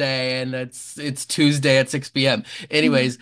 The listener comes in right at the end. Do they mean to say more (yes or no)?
no